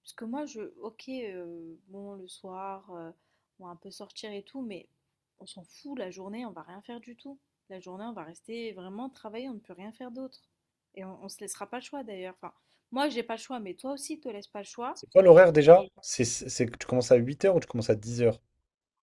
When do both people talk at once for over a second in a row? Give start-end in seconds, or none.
none